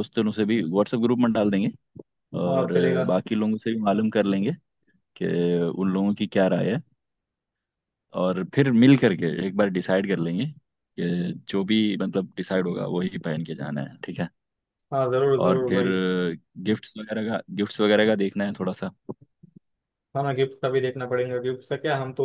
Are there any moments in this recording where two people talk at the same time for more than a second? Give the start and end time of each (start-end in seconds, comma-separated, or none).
none